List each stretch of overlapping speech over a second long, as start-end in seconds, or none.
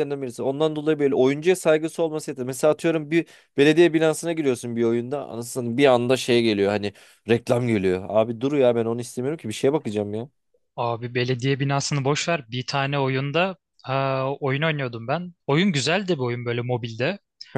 none